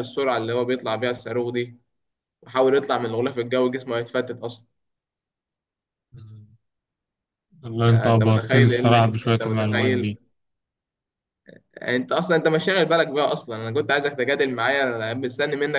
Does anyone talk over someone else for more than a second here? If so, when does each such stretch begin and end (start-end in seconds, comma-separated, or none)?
7.9-10.2